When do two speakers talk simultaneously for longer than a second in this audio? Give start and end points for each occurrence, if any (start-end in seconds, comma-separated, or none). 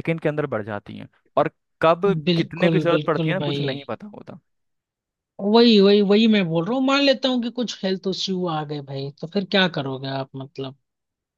2.3-3.6